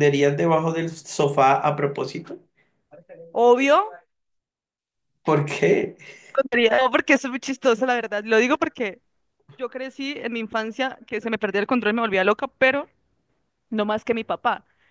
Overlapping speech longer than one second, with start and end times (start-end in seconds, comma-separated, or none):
none